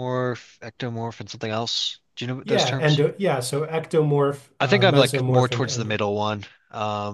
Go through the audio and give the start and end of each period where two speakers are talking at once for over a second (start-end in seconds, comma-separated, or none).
4.6-6.0